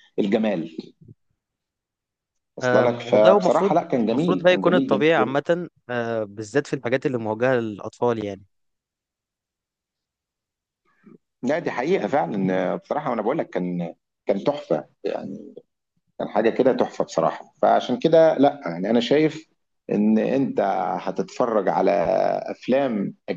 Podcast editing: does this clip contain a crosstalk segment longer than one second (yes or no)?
yes